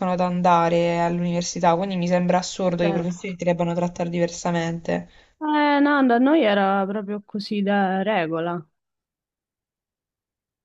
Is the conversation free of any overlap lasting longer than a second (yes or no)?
yes